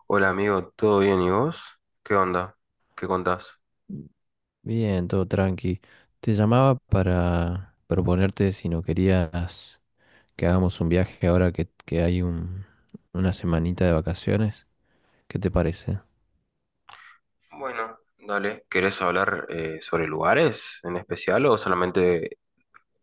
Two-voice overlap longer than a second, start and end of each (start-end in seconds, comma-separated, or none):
none